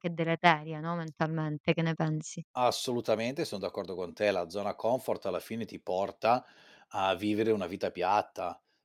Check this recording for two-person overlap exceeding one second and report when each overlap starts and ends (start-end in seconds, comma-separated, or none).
none